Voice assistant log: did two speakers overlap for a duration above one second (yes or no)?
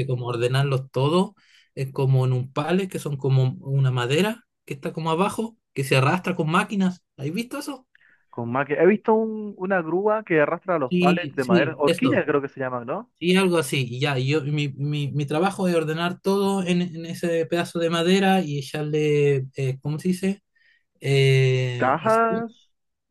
yes